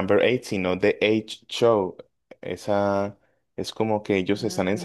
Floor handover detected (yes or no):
no